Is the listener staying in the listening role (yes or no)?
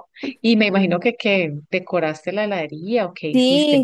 no